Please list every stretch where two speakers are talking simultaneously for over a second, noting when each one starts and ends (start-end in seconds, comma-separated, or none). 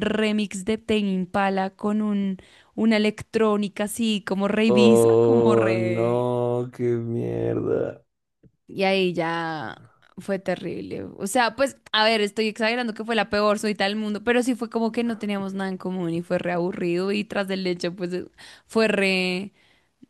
4.7-6.3